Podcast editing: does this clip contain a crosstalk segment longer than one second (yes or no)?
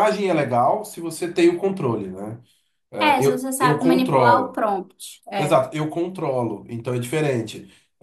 yes